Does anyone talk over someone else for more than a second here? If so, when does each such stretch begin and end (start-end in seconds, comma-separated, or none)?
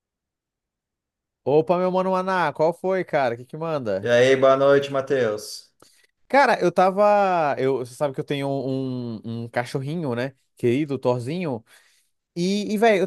none